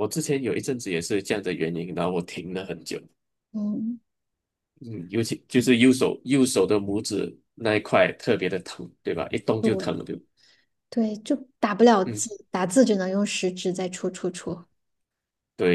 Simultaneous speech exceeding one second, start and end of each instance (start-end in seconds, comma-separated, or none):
none